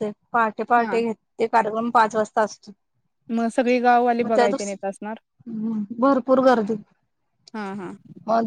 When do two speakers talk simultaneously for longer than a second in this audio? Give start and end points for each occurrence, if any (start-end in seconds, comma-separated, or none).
none